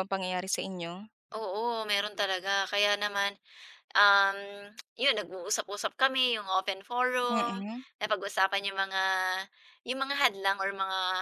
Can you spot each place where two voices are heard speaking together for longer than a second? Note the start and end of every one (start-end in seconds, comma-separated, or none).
none